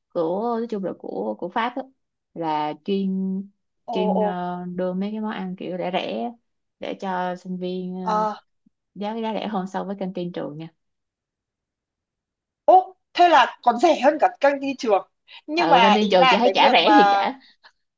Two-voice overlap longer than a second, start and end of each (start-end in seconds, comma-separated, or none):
15.6-16.9